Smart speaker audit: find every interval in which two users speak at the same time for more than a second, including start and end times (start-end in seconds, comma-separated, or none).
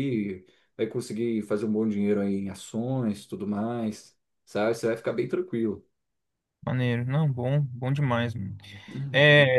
none